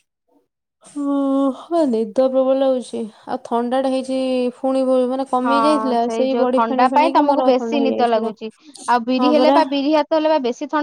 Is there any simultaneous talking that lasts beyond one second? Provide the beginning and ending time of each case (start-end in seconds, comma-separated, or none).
6.4-8.3